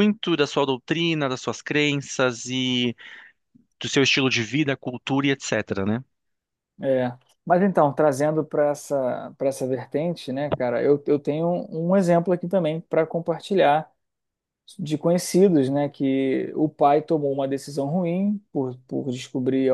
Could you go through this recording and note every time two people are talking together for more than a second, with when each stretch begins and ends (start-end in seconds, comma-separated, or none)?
none